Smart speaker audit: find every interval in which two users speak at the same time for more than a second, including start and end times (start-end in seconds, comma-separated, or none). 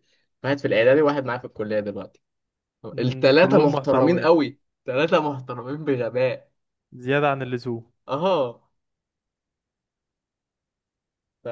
3.0-4.3